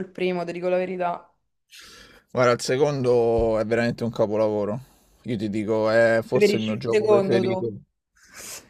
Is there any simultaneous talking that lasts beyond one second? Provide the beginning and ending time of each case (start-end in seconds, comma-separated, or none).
6.3-7.7